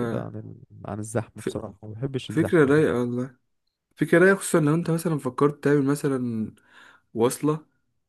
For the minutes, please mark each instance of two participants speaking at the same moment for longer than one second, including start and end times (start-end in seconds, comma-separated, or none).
none